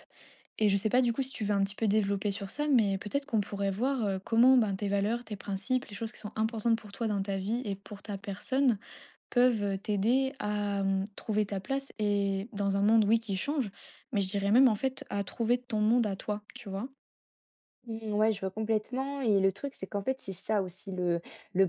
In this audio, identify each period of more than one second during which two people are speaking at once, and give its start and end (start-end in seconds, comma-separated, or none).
none